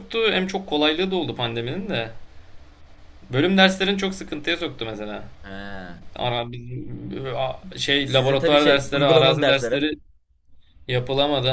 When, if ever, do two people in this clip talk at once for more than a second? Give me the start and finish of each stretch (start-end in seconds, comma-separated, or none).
8.0-9.9